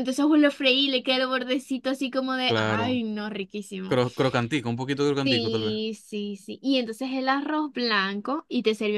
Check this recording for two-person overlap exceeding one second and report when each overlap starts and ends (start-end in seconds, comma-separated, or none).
none